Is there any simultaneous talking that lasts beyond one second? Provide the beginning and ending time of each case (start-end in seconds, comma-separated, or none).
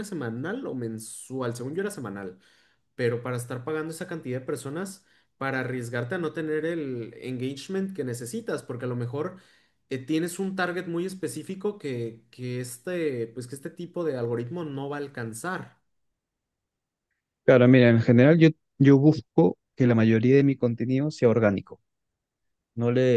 none